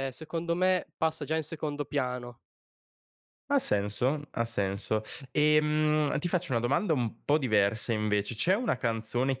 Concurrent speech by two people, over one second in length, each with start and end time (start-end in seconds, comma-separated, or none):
none